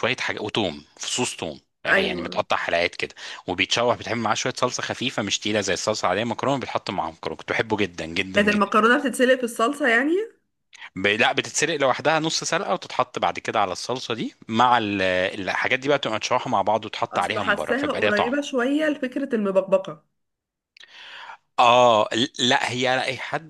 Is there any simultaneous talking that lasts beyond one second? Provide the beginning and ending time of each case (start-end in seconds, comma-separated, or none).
17.1-18.3